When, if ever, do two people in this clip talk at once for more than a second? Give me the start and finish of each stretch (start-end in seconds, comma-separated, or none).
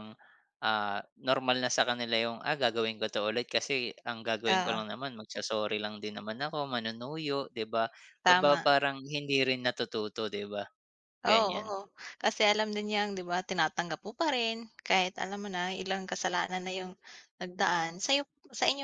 none